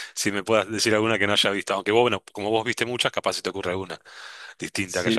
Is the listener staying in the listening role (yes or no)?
no